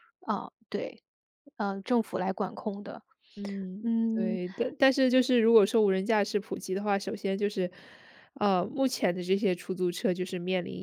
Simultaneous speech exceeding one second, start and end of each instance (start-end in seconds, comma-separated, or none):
none